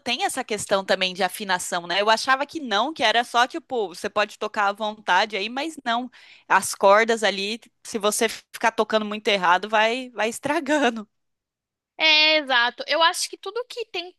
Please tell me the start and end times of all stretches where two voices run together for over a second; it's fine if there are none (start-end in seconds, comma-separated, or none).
none